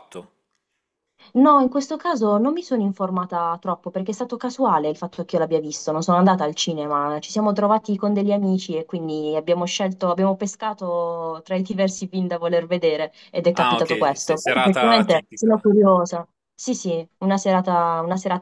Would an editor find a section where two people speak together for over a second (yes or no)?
yes